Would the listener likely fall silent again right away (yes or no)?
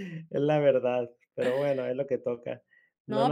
no